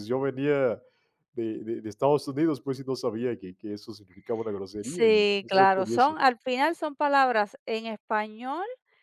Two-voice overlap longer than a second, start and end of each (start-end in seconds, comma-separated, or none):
4.8-6.2